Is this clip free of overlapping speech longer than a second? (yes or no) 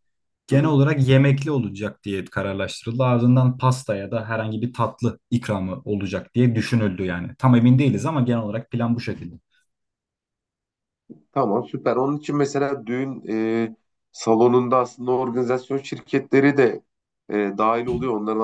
yes